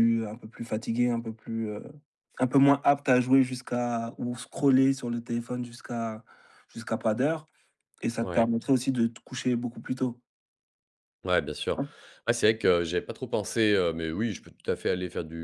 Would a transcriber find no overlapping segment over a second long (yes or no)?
yes